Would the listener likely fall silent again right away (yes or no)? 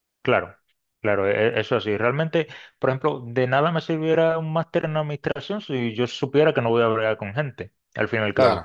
yes